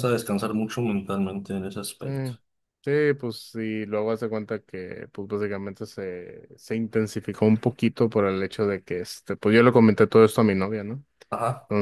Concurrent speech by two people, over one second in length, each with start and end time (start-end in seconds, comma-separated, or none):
none